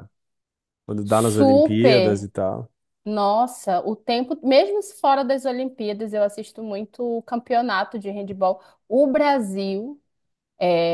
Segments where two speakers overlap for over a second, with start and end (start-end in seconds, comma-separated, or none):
1.0-2.3